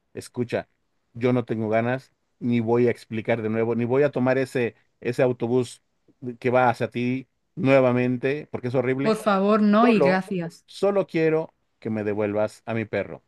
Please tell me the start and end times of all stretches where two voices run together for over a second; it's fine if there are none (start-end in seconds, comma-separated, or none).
none